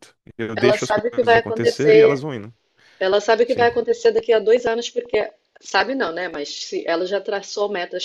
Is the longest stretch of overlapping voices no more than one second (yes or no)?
no